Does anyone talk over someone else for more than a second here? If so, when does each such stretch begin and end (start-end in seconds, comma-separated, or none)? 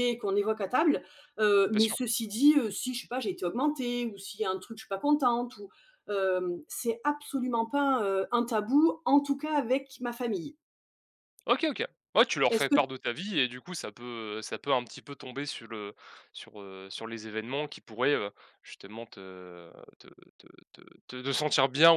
none